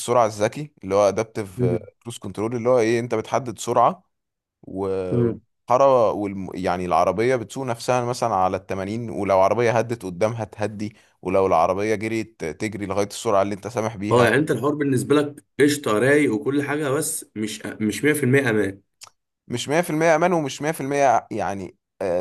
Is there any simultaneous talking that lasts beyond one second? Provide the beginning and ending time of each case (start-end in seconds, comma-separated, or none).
none